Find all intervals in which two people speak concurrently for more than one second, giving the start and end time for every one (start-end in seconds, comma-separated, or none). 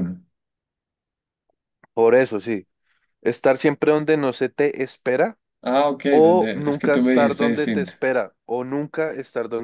6.1-7.9